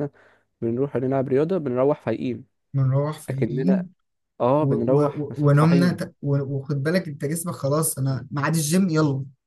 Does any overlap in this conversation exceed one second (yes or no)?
yes